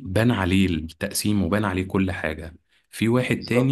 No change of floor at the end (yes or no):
yes